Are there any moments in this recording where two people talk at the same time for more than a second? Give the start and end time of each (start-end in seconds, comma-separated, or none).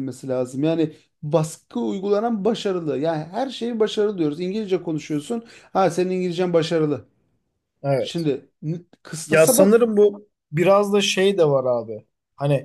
none